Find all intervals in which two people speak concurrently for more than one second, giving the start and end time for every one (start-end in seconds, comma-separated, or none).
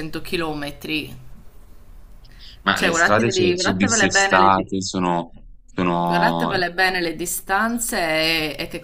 2.7-4.8